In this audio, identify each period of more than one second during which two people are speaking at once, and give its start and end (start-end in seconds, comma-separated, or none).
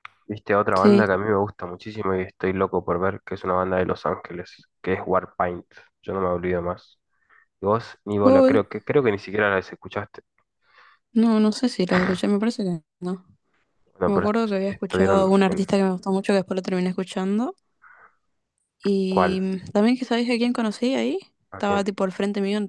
14.0-15.7